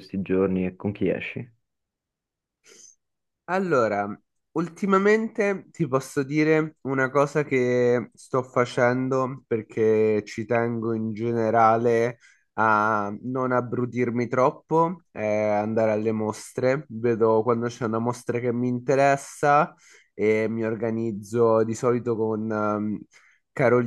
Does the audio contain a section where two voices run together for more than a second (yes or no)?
no